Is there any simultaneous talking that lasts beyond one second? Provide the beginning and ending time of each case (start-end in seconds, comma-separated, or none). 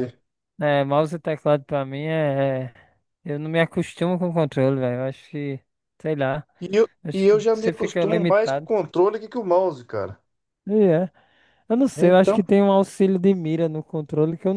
7.0-8.7